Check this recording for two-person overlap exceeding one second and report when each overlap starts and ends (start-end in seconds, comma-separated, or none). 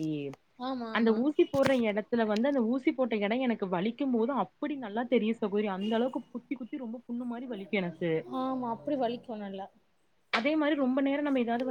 none